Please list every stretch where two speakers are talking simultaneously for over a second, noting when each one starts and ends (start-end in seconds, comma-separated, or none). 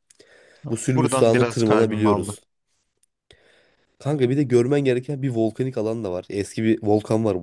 0.9-2.4